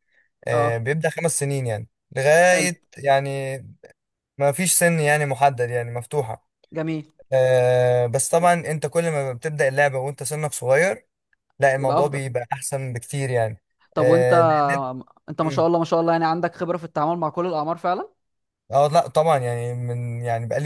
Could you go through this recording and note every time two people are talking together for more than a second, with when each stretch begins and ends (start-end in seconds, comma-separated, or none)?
none